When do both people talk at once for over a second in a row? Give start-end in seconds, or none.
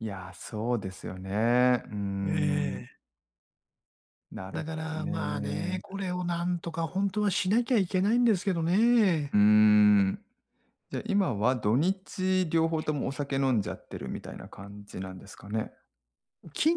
4.5-5.8